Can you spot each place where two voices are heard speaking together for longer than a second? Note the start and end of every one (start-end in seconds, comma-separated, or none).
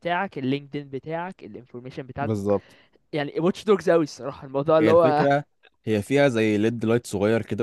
none